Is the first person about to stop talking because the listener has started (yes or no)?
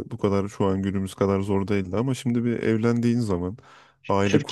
yes